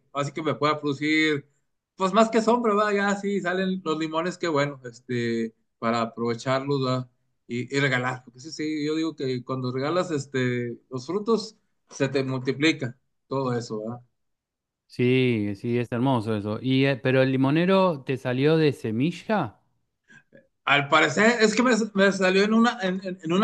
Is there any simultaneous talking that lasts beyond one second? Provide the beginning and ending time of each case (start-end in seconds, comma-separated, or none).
none